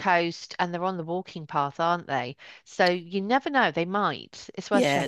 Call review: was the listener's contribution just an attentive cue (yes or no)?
no